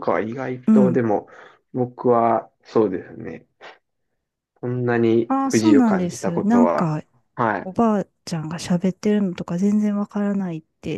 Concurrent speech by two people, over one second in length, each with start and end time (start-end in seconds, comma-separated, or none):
5.3-6.9